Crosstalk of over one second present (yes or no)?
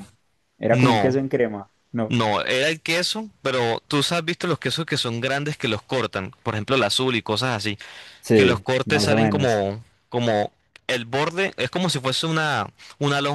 yes